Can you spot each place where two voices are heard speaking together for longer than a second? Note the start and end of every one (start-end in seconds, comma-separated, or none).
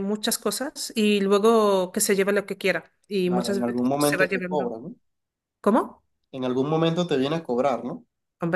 3.2-4.7